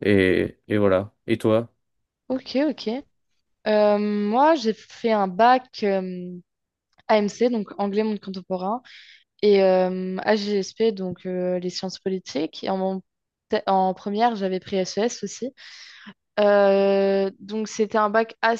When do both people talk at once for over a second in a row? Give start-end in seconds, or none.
none